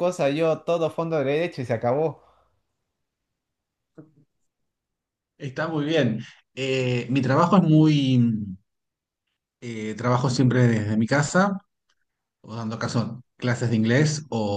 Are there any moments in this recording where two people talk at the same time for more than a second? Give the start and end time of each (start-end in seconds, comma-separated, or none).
none